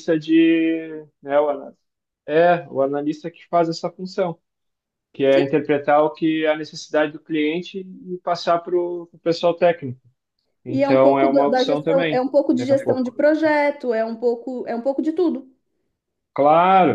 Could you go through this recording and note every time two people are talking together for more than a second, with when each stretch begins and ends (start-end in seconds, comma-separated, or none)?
10.7-13.2